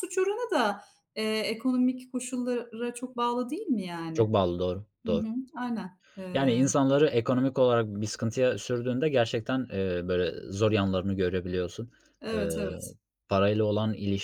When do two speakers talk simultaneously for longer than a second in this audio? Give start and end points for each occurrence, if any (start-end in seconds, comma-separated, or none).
none